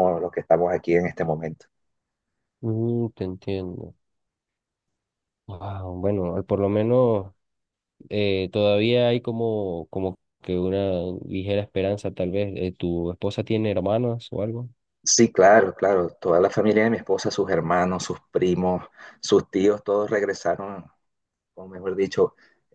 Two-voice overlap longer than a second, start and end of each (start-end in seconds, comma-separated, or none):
none